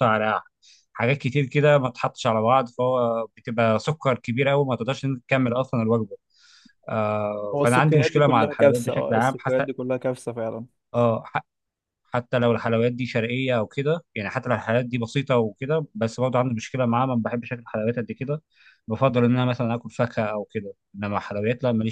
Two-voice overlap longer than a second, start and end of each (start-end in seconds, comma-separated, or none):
7.5-9.7